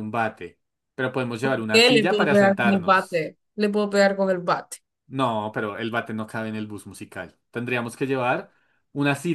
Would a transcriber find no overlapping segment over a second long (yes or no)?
no